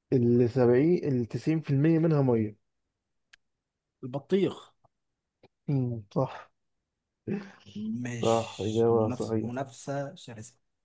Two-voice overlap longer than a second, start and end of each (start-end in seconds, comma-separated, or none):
8.2-9.7